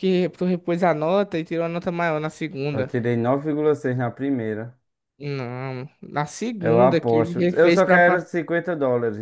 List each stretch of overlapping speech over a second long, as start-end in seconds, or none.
6.6-8.3